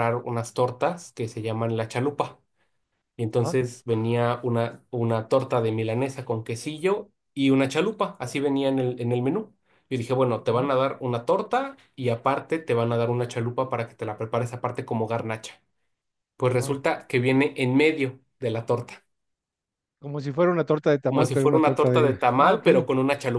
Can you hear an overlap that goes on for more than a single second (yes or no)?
yes